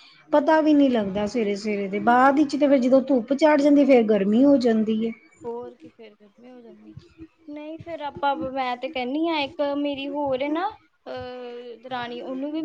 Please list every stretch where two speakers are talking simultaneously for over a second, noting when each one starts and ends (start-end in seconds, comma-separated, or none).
none